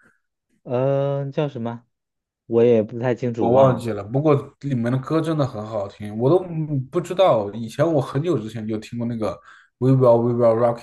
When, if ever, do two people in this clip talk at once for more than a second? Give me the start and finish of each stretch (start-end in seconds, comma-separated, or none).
none